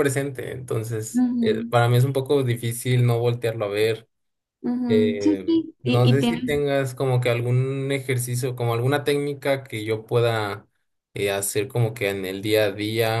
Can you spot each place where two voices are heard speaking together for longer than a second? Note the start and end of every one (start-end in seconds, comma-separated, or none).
4.9-6.6